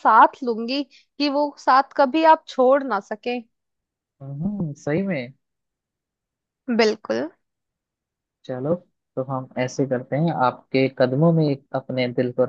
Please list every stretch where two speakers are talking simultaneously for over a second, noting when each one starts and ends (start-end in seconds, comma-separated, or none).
none